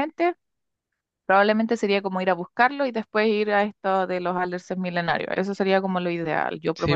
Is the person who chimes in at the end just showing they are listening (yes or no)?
no